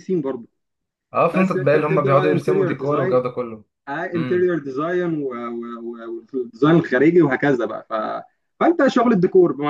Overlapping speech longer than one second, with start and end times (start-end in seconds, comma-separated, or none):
1.3-3.2